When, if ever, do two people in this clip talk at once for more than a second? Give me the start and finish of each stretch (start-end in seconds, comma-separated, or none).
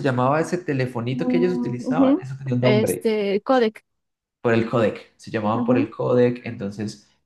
1.1-3.1